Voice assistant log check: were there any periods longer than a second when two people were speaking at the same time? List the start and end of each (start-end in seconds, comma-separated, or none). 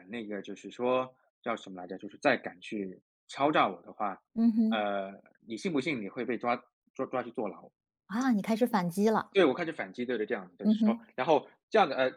none